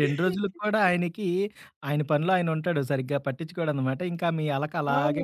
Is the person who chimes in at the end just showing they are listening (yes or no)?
no